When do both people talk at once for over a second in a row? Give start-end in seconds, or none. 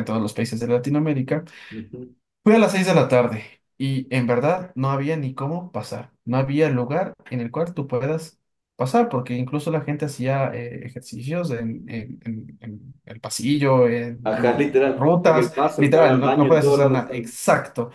14.2-17.4